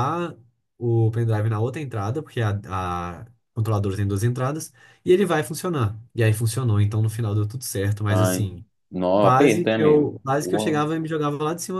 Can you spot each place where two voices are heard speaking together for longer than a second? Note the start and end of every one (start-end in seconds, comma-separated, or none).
9.2-10.9